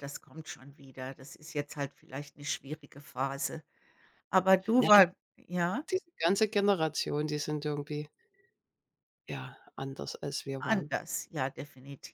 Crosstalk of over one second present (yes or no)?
no